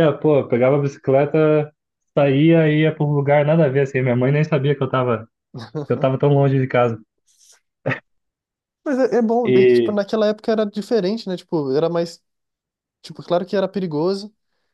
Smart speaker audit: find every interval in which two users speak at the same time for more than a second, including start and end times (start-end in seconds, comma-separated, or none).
none